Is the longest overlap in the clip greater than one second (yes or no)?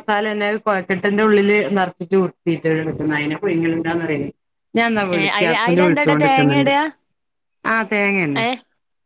yes